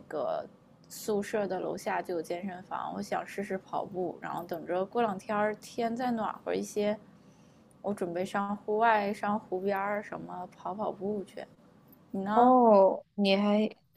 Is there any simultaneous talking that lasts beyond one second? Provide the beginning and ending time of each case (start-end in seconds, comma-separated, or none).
none